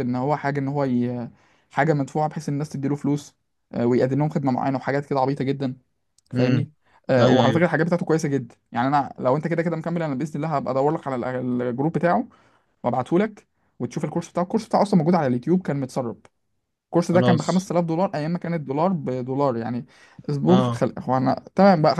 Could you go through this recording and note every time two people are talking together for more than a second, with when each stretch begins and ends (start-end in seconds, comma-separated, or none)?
none